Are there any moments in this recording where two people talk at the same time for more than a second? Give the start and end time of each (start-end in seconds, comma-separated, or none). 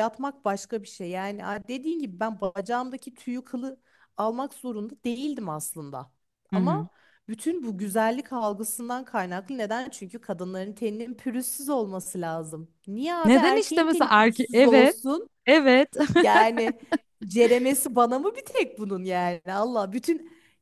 13.2-15.0